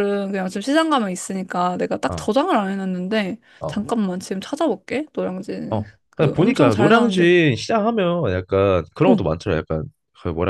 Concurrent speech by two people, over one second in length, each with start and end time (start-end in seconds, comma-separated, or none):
5.7-7.3